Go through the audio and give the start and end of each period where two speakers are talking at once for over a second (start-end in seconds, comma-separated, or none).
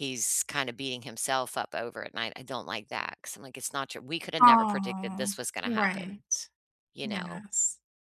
4.4-6.2